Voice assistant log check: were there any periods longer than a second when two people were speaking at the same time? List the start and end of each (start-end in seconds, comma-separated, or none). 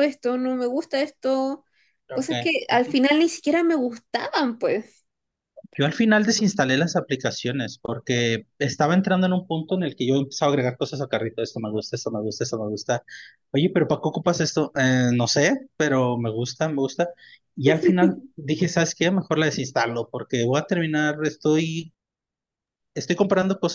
none